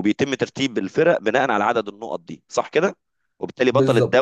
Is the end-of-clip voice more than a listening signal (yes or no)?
no